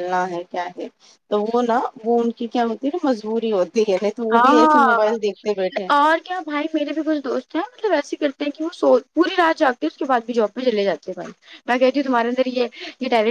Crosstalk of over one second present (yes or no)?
yes